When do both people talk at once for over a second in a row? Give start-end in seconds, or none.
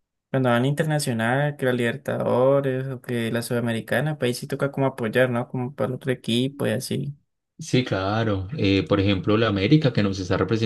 none